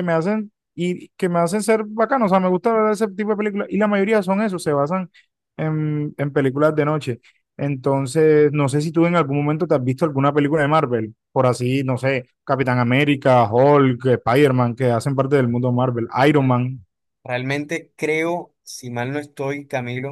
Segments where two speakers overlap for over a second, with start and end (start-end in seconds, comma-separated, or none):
none